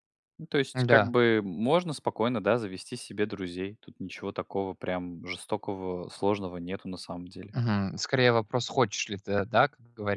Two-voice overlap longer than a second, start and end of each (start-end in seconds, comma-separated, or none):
none